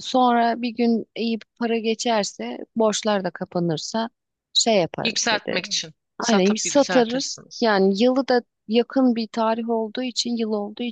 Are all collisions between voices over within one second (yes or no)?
no